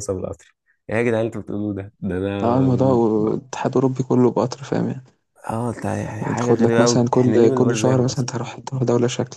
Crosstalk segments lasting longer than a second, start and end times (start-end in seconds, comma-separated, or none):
6.2-8.3